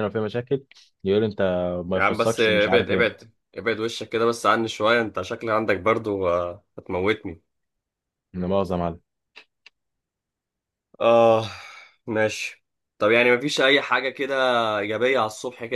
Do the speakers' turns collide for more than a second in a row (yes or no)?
yes